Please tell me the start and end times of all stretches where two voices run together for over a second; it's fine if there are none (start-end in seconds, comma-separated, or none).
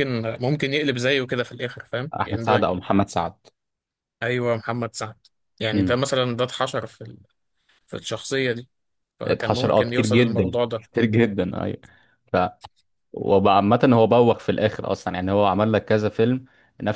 9.2-10.8